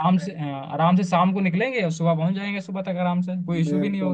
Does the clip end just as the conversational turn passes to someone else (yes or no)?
yes